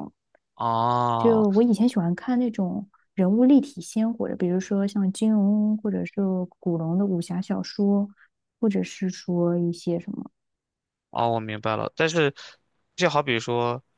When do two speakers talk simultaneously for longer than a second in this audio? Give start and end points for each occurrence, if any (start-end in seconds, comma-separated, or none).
none